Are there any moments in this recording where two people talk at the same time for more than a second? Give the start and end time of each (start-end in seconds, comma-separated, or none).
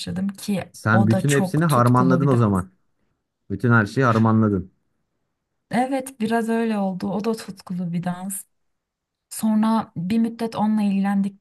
0.7-2.6